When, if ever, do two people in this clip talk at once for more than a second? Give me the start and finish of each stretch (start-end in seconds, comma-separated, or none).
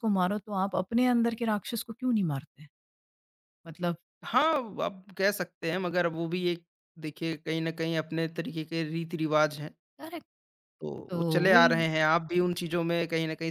none